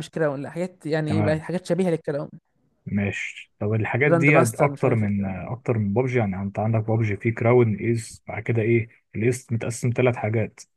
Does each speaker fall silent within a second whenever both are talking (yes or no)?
no